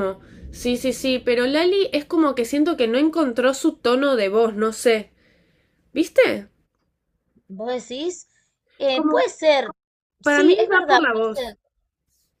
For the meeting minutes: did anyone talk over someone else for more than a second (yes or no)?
yes